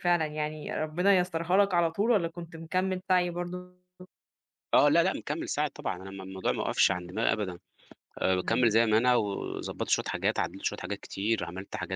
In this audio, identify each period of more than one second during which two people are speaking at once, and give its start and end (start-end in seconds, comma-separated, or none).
none